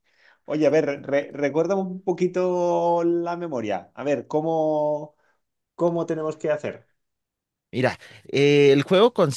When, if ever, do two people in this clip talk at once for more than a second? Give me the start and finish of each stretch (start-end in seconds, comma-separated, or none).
none